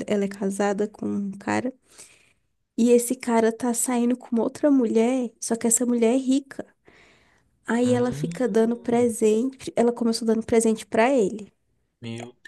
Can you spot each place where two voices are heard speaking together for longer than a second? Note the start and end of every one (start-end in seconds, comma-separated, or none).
7.8-9.1